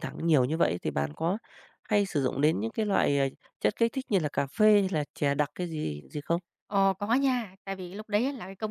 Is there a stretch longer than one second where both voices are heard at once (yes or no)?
no